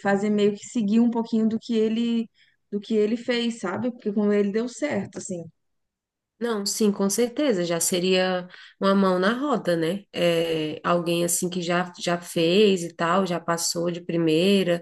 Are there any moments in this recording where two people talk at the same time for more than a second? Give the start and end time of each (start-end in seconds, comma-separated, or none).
none